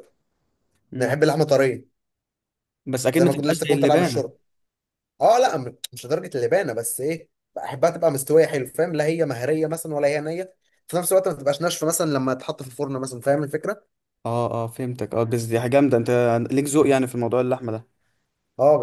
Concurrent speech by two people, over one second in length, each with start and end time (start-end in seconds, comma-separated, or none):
3.1-4.3